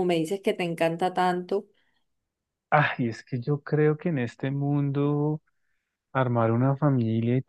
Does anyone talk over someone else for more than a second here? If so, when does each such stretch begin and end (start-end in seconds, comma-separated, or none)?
none